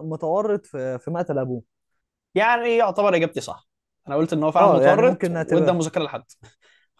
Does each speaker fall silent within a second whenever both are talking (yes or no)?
no